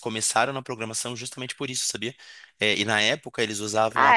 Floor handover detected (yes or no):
no